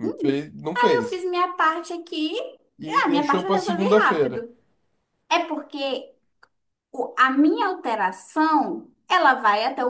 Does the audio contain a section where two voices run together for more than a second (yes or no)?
yes